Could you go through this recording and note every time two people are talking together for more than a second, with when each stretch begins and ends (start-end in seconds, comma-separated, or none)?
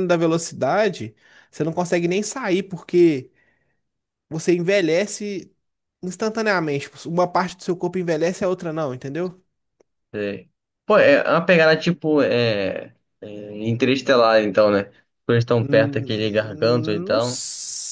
15.6-17.4